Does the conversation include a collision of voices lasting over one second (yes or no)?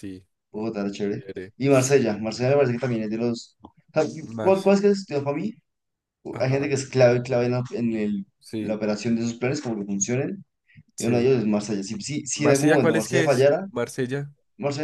yes